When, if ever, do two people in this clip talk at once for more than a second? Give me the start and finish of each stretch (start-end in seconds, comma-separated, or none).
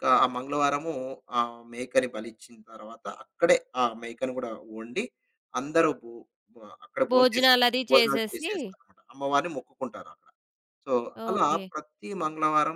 7.1-8.5